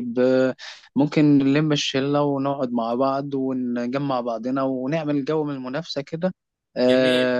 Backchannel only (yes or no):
no